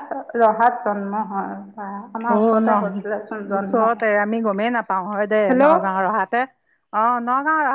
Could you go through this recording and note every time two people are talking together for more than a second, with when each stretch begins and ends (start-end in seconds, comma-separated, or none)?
none